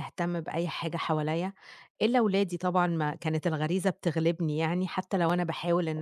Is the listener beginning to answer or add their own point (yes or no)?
no